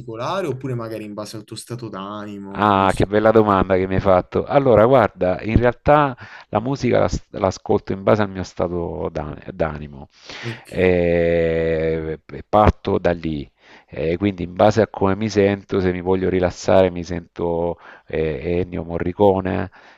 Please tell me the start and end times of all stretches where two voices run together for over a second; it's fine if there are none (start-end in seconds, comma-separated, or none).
none